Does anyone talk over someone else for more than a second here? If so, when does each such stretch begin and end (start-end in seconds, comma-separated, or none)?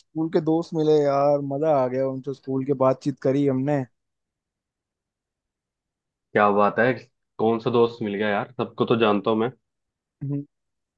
none